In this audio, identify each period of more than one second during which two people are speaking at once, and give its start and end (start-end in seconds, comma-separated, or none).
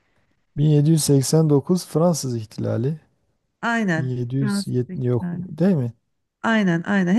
4.0-5.5